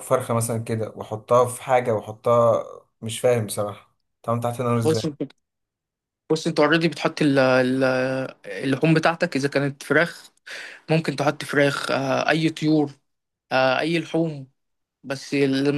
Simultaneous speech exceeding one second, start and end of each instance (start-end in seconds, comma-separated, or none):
none